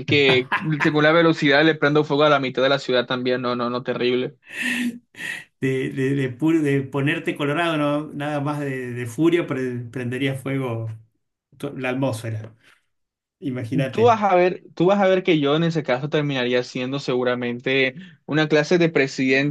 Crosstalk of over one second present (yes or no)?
no